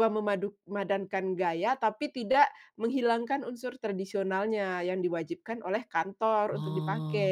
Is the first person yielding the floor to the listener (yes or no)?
yes